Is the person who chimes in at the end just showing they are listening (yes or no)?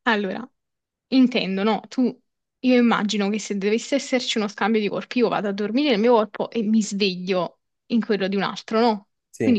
yes